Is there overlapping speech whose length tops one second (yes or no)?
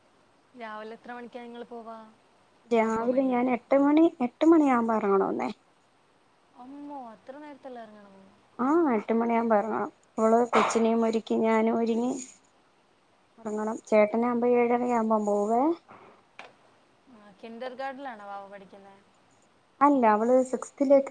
no